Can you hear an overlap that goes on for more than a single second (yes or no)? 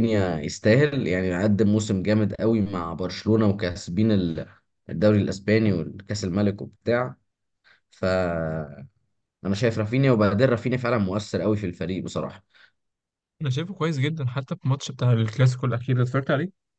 no